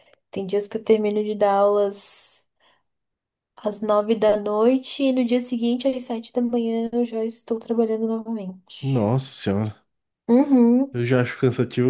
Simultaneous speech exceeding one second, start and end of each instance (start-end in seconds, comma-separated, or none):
none